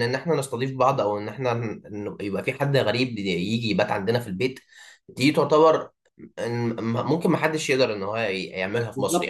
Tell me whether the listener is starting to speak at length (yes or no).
yes